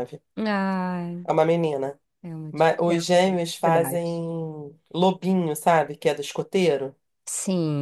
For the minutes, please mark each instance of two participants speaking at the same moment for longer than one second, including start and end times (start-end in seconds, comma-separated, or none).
2.5-4.2